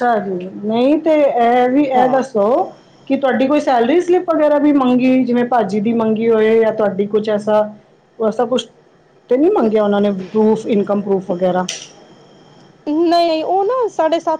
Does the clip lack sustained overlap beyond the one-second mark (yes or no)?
yes